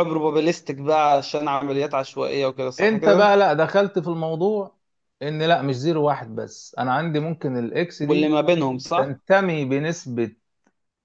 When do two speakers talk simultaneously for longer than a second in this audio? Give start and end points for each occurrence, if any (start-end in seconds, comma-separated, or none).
none